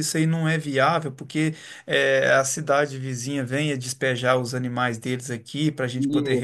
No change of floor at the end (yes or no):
yes